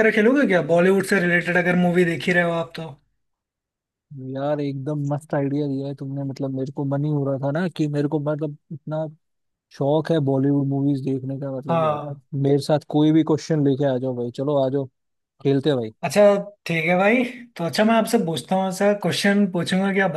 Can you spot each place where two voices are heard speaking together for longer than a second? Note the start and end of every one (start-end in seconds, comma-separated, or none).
none